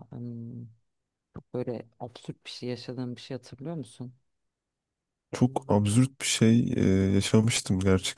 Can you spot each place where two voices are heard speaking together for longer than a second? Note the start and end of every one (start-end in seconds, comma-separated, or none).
none